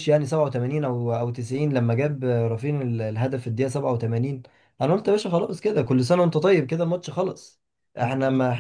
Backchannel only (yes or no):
yes